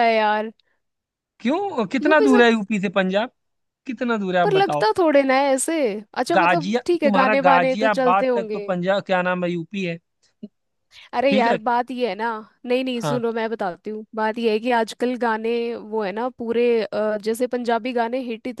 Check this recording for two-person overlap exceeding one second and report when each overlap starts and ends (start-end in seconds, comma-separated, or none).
6.3-8.6